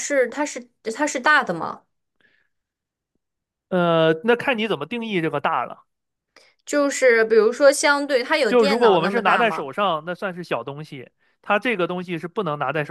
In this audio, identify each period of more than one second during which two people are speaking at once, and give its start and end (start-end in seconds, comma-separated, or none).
8.5-9.7